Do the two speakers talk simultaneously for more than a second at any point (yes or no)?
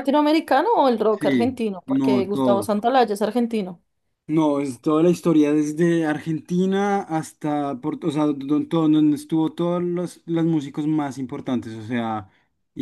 yes